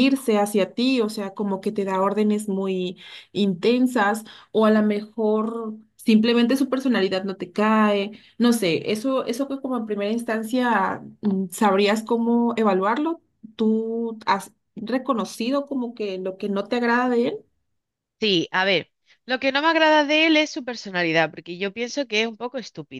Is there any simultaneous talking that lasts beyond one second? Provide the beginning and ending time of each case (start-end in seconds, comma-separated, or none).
none